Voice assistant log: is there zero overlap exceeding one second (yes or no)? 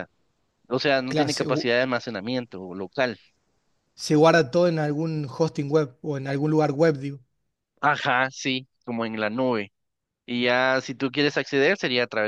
yes